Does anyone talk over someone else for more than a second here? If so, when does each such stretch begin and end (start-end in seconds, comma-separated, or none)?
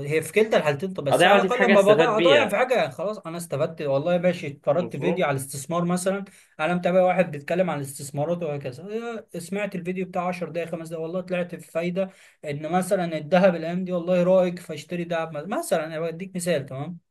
1.1-2.6